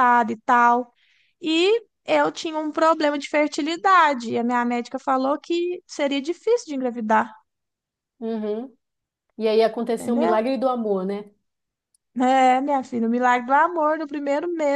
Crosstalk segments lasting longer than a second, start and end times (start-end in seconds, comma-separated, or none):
none